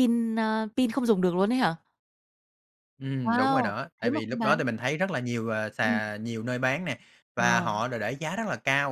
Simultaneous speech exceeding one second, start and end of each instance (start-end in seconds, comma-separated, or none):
3.2-4.6